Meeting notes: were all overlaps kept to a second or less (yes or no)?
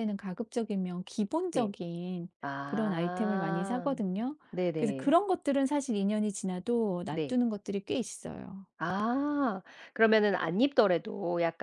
no